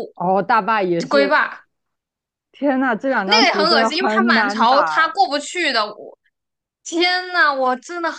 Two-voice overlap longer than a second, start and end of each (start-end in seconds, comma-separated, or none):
3.2-5.2